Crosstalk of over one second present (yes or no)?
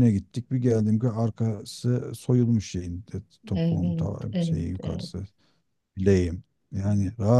yes